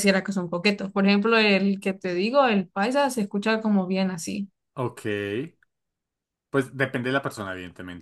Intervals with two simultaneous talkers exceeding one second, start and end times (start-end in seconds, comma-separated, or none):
none